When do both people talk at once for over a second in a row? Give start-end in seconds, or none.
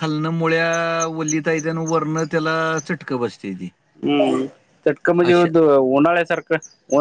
none